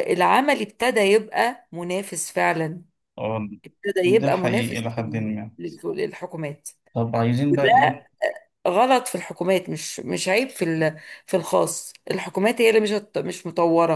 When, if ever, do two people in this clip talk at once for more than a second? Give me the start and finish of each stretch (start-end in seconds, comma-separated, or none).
4.0-5.3